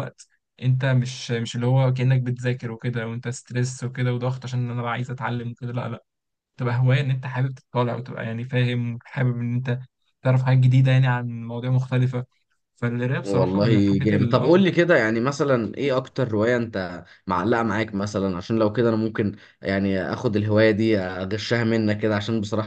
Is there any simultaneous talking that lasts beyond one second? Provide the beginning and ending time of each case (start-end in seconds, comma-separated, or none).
13.2-14.6